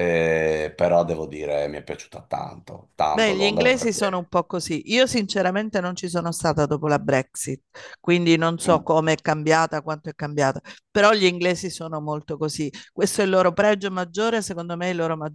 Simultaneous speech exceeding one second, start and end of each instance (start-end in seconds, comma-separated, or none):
3.1-4.3